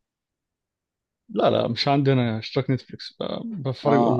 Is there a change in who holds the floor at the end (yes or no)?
yes